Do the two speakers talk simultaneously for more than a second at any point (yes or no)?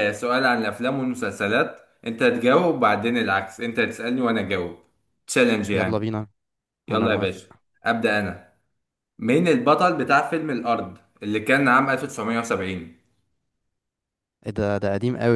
no